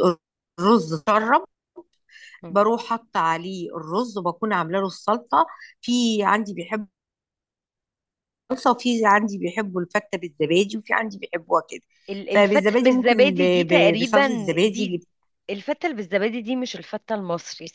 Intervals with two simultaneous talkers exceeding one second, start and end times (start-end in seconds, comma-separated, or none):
12.3-15.0